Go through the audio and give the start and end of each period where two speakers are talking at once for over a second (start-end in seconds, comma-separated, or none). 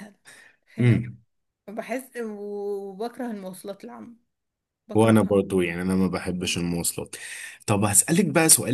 none